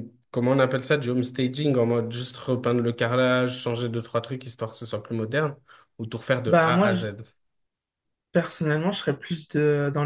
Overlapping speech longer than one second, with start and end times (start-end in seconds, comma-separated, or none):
none